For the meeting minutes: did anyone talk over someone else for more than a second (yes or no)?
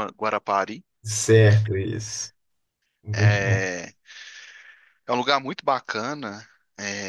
no